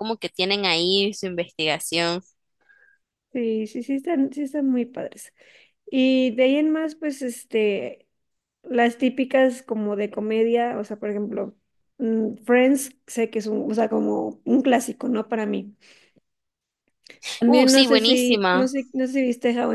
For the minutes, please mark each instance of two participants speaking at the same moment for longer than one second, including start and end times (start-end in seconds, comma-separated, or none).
17.5-18.7